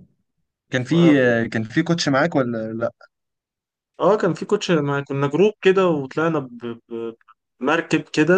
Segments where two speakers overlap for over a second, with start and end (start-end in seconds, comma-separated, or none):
none